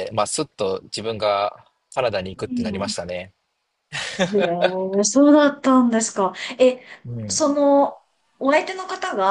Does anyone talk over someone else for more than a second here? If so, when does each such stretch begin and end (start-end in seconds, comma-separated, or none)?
none